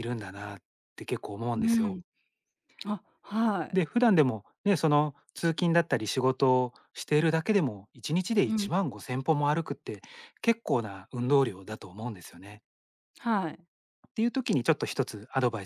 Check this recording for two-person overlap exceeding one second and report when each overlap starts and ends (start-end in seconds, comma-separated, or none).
none